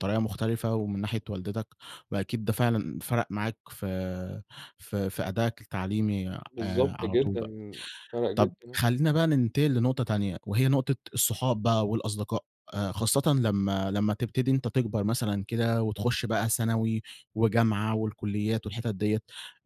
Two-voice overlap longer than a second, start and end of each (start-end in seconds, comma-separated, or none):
none